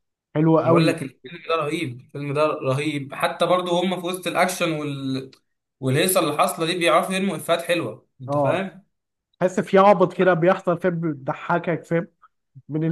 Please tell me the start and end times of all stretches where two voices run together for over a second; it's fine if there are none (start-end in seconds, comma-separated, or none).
none